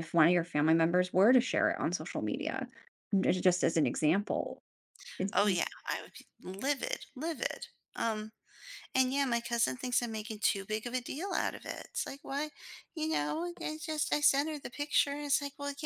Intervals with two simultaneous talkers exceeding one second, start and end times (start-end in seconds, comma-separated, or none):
none